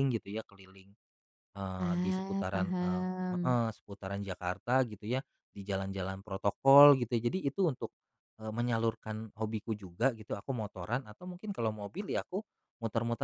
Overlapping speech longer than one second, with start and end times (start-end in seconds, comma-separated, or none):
1.8-3.6